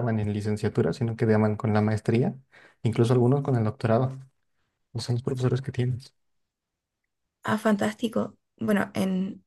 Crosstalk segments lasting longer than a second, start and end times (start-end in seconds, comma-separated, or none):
none